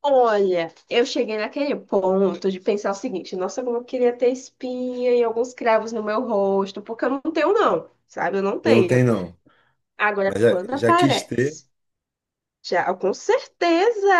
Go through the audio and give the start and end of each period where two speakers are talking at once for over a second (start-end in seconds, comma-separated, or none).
10.2-11.6